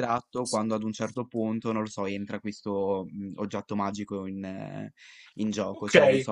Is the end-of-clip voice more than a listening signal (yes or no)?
yes